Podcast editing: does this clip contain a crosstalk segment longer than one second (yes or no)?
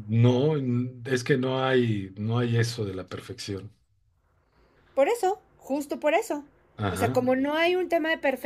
no